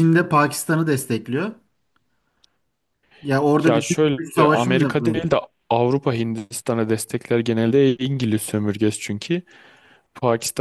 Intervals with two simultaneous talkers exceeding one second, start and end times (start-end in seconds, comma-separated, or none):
3.6-5.2